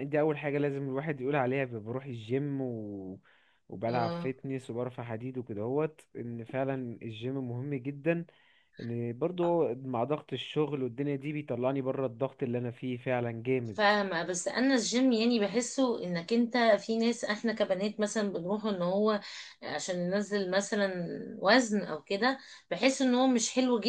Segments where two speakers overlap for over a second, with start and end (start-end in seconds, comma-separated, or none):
none